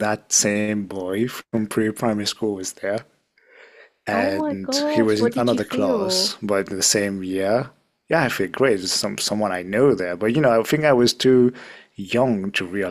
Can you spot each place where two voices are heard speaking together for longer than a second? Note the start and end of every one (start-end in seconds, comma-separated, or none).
4.1-6.4